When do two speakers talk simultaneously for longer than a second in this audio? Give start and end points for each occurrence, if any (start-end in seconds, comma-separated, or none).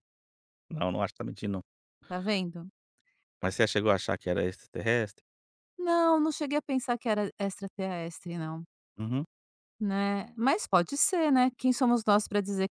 none